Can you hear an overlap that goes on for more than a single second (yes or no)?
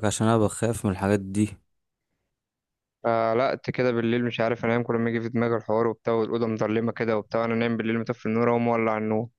no